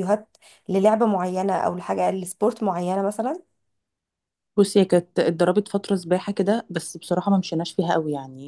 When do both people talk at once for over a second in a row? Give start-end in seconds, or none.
none